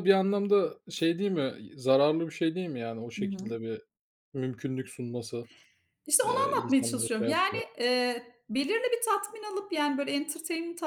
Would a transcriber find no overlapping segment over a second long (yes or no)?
no